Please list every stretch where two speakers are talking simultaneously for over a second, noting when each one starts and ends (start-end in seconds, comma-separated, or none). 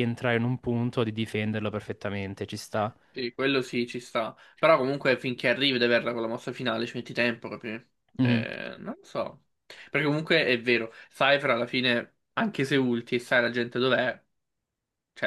none